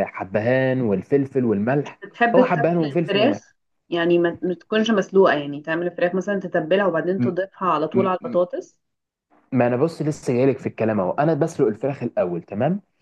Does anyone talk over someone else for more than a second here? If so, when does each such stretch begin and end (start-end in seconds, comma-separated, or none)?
1.8-3.4